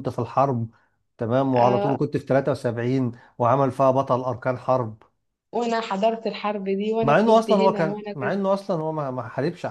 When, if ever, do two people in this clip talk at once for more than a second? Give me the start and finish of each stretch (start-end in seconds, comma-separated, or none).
7.0-8.4